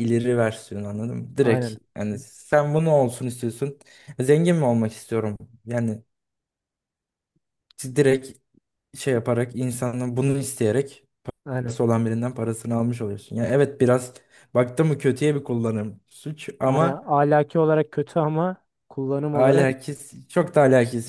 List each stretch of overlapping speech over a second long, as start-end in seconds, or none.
none